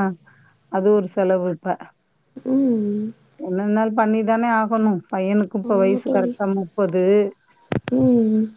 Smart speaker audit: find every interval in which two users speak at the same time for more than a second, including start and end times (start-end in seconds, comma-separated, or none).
none